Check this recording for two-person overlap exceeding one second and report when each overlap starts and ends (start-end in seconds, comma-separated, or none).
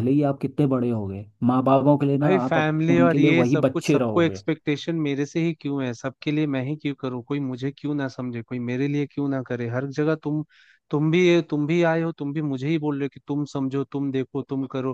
2.2-4.4